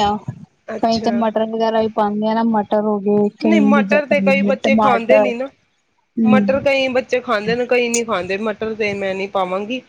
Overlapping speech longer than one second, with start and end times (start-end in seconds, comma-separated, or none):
3.4-5.3